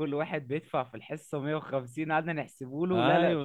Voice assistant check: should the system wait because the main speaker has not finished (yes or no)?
no